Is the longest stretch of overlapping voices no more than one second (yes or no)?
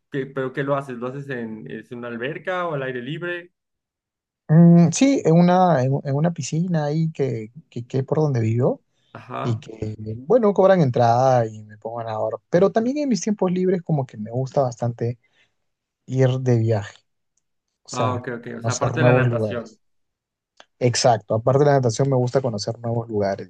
no